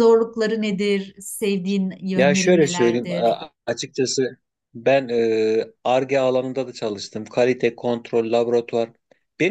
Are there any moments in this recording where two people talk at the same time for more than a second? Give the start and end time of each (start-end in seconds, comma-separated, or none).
2.1-3.4